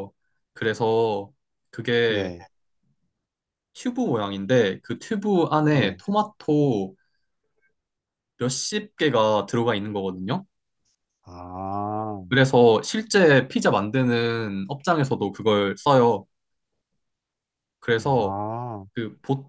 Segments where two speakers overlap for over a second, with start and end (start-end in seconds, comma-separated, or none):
none